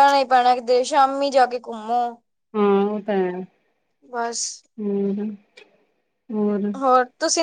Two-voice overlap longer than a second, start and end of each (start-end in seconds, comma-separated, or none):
none